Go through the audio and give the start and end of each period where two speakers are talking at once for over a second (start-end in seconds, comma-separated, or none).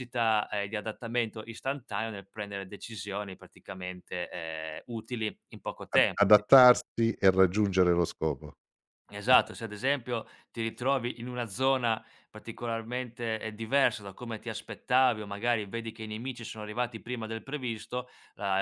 none